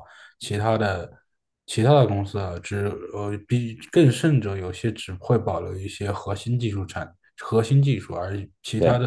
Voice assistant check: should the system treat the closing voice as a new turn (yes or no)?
no